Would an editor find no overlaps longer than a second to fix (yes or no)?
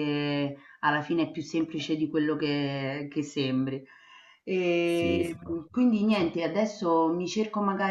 no